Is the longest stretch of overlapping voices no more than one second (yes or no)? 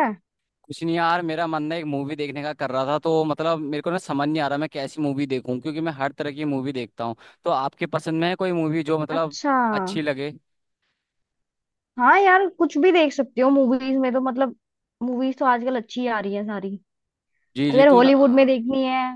yes